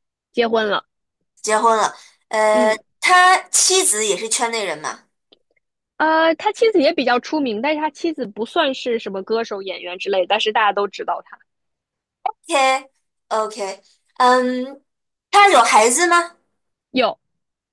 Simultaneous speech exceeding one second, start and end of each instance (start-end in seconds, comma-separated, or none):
none